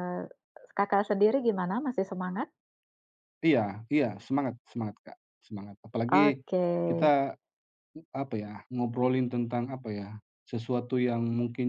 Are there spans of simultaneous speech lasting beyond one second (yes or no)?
no